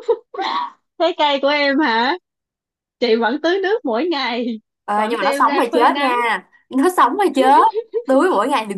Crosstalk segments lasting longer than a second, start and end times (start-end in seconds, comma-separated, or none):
5.0-6.2